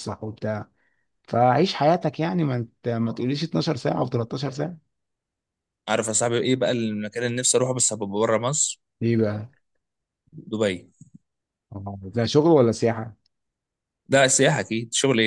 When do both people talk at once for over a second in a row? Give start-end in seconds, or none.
none